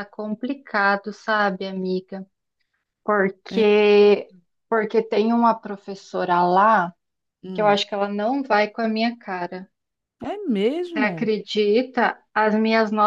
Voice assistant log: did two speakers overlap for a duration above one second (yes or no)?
no